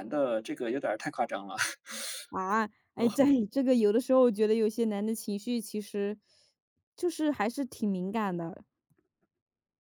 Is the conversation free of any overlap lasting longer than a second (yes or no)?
yes